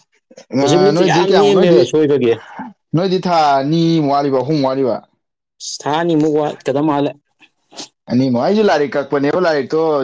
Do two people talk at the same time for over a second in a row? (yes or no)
yes